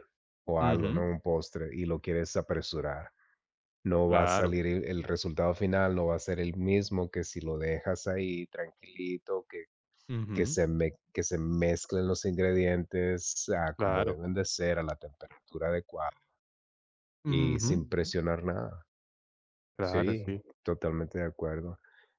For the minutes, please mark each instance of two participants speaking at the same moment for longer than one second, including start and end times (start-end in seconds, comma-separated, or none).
none